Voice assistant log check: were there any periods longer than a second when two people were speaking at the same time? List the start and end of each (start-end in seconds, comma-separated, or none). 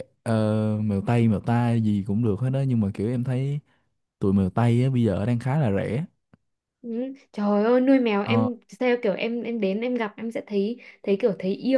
none